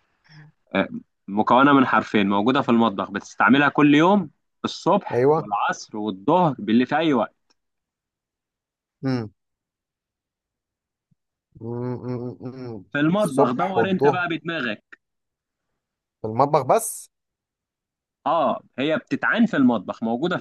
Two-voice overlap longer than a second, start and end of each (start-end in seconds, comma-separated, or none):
12.9-14.2